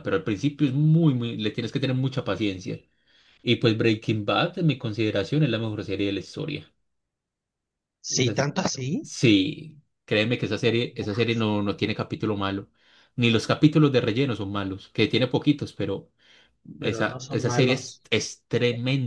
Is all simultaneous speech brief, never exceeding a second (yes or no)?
no